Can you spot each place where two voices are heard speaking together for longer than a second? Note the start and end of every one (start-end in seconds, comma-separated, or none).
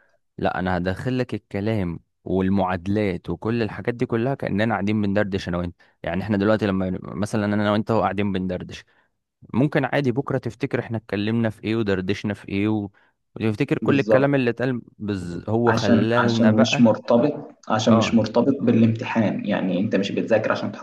15.7-16.9